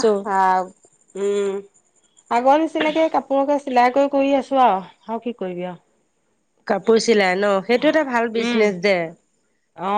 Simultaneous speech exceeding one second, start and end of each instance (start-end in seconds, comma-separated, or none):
none